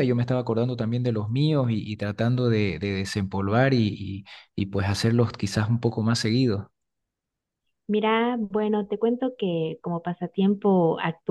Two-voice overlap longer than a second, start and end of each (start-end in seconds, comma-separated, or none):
none